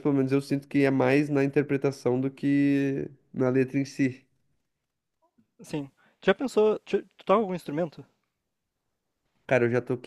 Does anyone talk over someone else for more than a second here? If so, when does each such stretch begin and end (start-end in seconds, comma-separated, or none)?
none